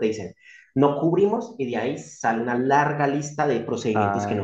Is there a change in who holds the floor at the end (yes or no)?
no